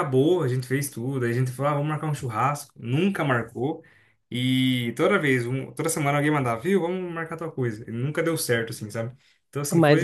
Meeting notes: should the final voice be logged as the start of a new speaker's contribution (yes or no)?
yes